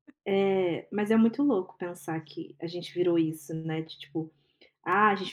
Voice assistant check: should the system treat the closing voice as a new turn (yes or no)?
no